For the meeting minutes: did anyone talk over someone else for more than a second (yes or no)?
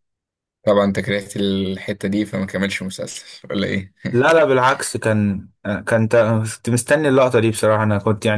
no